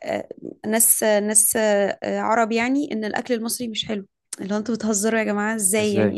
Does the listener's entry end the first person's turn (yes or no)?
no